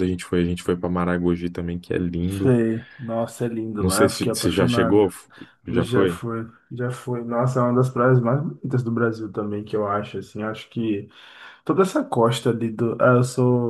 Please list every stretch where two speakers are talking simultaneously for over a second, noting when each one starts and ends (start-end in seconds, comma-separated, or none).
3.8-5.1